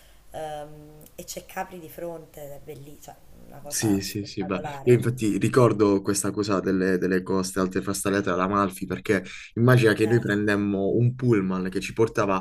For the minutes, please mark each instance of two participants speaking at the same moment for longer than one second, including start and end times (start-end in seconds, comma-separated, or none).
3.7-5.2